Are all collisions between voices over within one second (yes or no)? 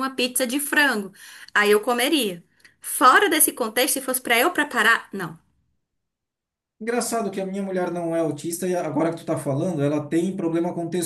yes